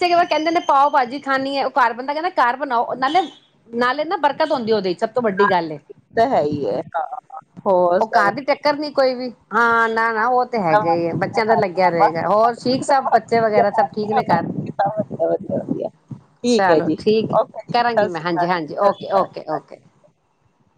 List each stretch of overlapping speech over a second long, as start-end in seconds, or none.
17.7-19.6